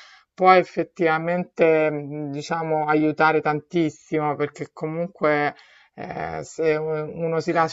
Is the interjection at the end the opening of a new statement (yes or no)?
no